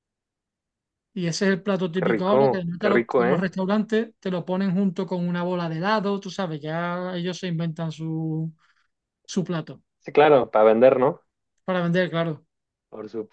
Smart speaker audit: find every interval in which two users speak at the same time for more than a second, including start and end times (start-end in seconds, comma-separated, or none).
1.9-3.5